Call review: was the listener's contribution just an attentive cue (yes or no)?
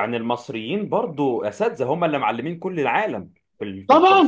no